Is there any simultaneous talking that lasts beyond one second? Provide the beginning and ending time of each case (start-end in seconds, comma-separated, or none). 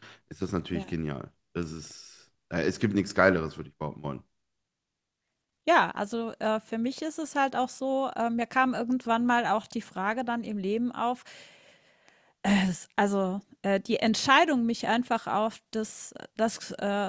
none